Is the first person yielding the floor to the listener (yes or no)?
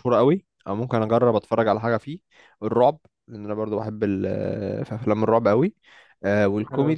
no